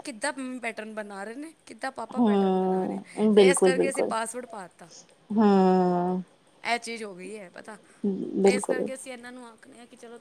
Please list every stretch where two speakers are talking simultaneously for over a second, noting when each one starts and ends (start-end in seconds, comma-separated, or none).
2.2-4.1